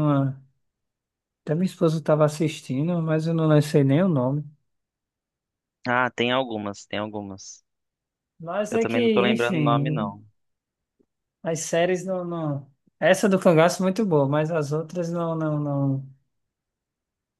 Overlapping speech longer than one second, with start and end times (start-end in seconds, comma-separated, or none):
8.7-10.1